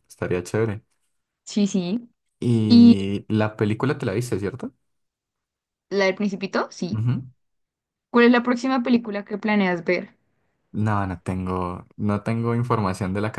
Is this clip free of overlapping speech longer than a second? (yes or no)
yes